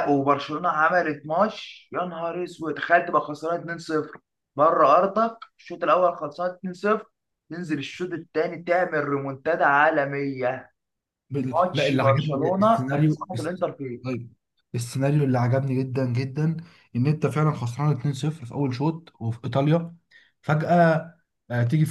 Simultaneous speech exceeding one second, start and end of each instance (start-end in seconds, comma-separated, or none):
11.5-13.6